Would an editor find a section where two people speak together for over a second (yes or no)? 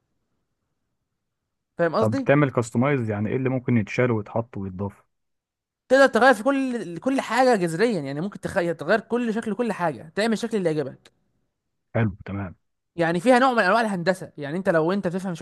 no